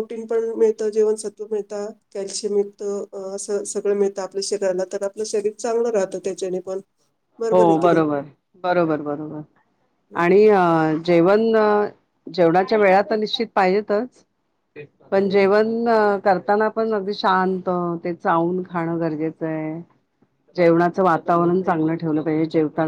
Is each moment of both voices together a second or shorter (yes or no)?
yes